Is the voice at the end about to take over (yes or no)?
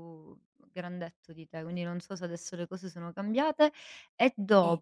no